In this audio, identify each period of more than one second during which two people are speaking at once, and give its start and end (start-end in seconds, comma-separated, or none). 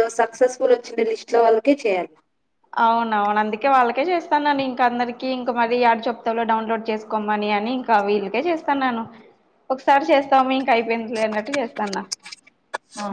none